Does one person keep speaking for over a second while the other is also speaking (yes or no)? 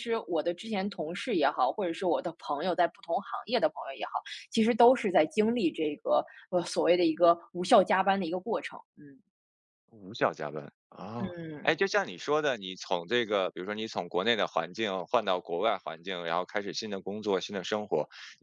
no